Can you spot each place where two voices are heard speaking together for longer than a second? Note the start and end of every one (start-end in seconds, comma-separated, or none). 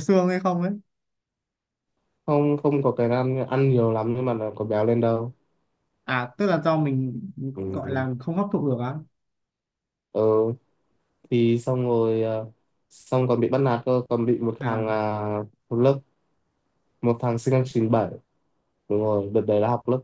none